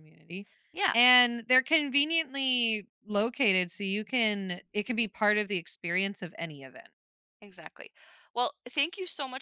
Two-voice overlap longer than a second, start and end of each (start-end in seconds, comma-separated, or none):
none